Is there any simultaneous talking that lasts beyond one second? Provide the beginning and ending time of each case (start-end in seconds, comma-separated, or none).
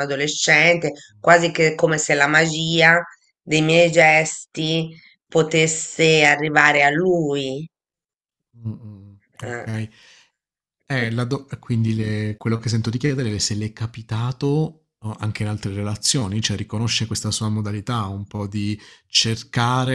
none